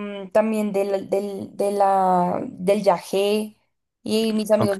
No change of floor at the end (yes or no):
yes